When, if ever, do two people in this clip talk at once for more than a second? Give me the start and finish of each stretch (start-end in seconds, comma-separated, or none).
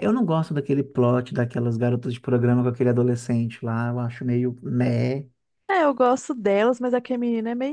none